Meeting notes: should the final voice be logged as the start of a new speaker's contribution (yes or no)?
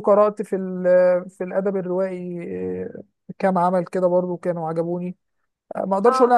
no